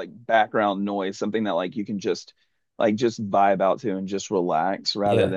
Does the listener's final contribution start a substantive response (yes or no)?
yes